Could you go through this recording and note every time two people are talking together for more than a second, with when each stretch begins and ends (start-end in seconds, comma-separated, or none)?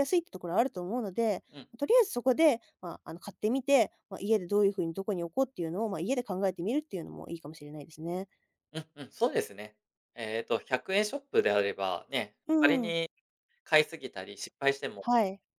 none